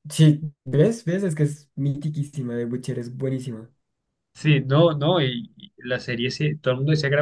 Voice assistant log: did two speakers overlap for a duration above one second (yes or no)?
no